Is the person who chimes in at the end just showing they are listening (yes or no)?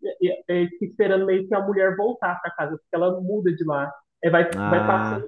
yes